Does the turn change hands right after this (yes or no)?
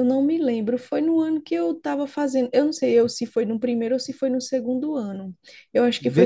yes